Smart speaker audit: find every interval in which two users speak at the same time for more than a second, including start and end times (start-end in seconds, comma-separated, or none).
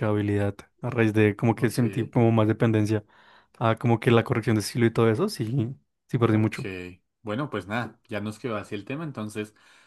none